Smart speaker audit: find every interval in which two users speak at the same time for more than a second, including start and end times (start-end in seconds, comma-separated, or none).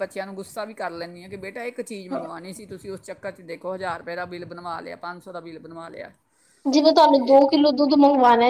none